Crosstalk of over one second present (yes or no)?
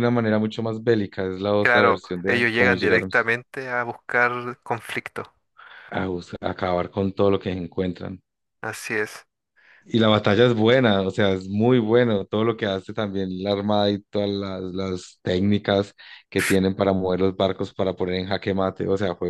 yes